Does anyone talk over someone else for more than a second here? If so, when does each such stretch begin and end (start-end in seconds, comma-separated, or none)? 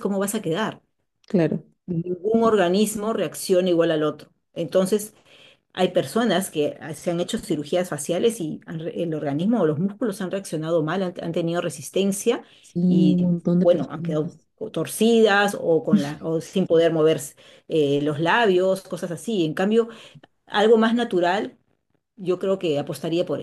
12.8-14.5